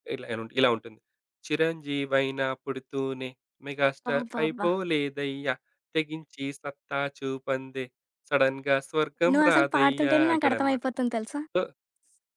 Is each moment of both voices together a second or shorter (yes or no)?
no